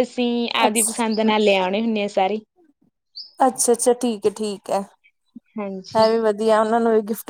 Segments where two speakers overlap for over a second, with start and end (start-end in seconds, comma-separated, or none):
none